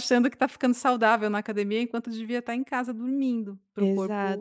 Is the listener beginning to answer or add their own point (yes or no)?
yes